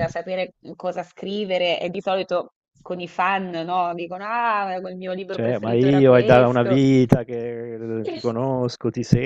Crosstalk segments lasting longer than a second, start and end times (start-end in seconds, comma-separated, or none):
5.3-6.8